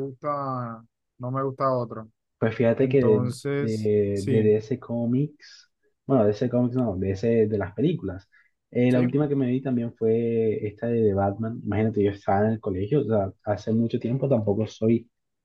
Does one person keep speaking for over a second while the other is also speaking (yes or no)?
yes